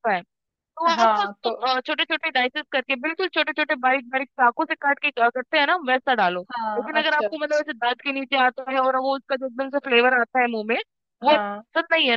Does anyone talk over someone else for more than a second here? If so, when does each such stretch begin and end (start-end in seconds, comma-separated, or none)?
none